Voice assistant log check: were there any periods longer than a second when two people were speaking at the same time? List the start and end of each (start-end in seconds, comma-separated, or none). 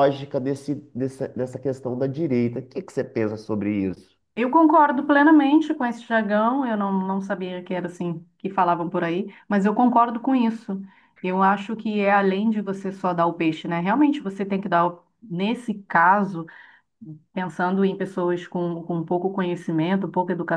none